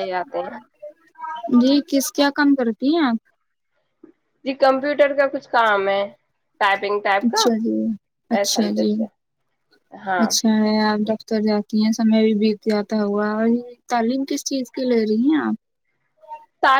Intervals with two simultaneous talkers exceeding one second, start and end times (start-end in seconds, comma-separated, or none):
none